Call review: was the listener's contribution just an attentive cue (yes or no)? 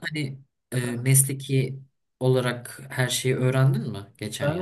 no